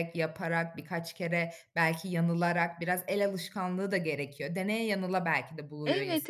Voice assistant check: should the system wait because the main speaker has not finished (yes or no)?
no